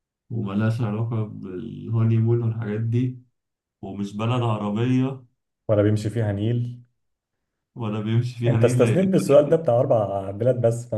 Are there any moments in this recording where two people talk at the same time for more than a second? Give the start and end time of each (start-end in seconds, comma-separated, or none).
8.4-9.7